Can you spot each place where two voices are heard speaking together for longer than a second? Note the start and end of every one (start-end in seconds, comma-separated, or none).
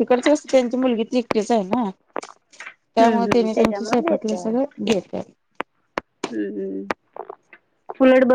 2.9-4.7